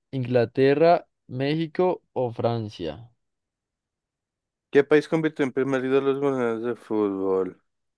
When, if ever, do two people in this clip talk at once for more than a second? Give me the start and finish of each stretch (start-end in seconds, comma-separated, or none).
none